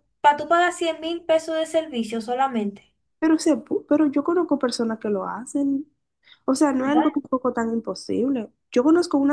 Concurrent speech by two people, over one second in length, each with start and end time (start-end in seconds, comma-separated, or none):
none